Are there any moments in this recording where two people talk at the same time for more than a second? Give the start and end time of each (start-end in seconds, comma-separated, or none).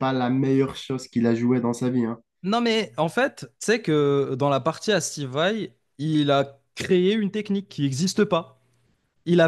none